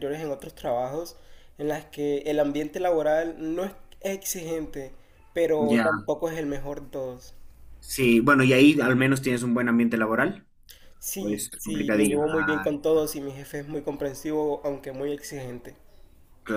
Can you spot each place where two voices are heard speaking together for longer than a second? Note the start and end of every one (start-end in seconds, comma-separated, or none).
11.2-12.7